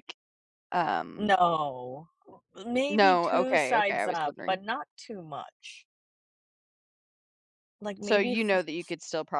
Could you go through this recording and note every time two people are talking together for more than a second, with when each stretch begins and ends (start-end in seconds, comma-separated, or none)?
2.9-4.6